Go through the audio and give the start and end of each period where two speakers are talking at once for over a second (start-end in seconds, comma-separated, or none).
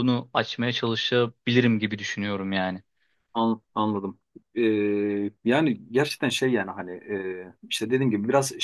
none